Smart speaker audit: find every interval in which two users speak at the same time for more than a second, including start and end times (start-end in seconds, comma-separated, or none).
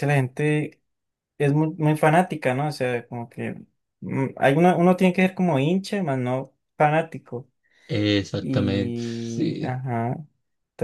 8.4-9.8